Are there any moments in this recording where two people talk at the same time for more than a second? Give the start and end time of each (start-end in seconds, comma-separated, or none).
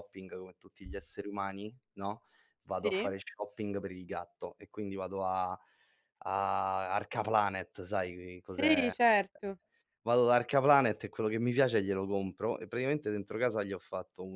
none